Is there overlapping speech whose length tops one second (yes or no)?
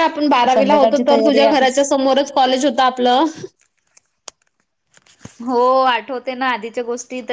yes